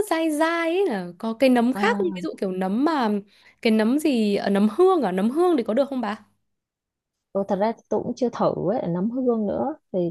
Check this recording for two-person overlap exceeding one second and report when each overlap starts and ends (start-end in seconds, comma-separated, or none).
none